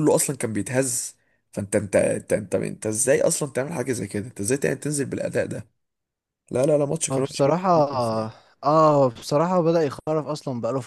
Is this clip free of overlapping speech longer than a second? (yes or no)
yes